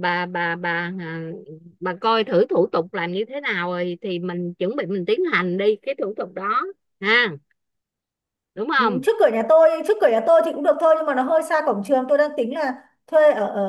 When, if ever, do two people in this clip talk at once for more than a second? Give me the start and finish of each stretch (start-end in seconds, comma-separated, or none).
none